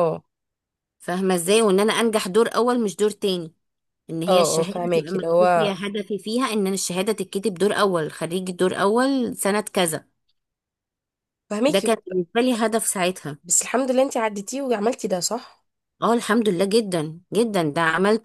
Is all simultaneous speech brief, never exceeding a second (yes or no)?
no